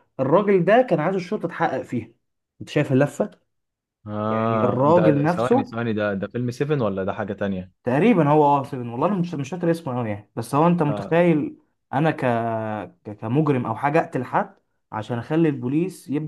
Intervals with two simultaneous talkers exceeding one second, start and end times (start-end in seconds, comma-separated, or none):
4.3-5.7